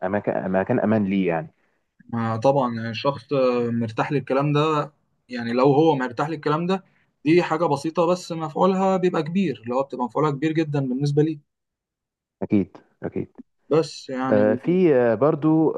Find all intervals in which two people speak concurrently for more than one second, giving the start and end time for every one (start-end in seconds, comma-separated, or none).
none